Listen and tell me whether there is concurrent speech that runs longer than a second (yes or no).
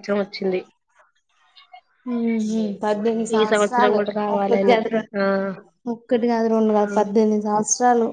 no